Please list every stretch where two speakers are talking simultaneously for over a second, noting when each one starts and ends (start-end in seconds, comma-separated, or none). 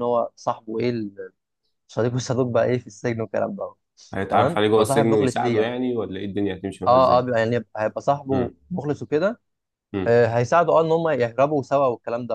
4.3-5.7